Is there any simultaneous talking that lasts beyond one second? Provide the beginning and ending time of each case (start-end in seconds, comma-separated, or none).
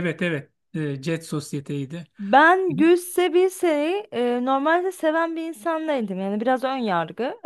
none